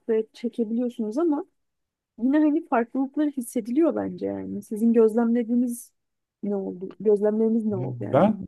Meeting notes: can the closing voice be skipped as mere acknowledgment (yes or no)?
no